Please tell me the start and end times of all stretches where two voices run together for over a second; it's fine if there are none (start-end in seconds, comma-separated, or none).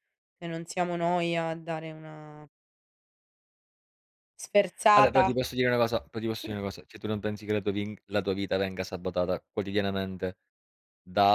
none